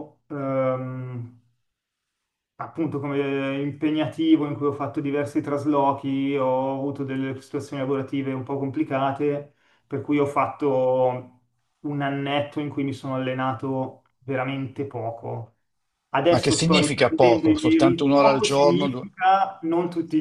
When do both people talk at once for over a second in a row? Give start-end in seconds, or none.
16.3-19.1